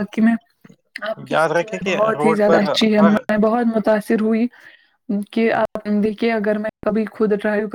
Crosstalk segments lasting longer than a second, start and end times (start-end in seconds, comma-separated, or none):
1.3-3.2